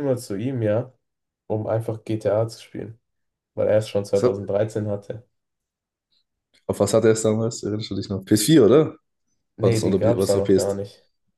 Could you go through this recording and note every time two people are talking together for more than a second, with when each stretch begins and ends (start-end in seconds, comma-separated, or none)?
9.6-10.8